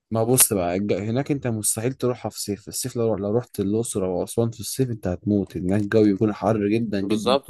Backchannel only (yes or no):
no